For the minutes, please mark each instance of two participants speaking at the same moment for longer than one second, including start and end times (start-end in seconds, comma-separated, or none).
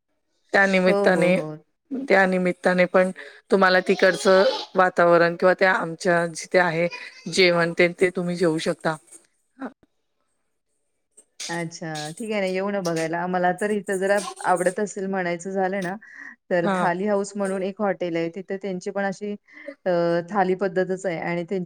none